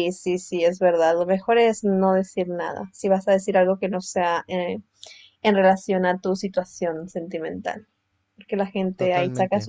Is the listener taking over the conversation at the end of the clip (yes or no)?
no